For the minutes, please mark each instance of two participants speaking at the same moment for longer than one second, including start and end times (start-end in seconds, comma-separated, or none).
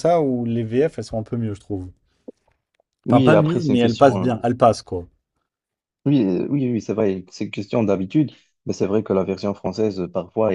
3.1-4.3